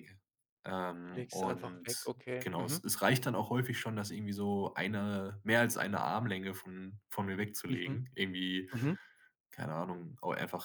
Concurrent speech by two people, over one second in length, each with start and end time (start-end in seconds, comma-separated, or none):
1.1-2.8